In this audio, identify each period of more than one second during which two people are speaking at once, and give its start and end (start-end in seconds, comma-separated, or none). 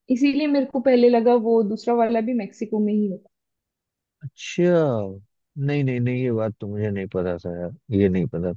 none